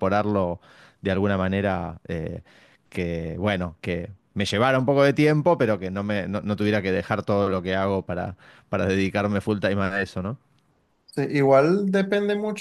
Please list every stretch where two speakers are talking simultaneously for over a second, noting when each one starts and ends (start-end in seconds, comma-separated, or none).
none